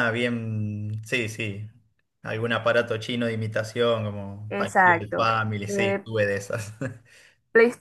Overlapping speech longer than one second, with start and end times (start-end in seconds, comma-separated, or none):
4.5-6.0